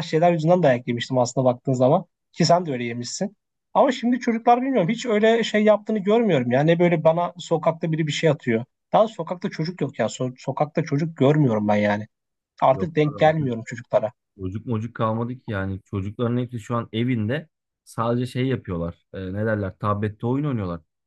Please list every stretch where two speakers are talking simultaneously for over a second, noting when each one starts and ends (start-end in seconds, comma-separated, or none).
none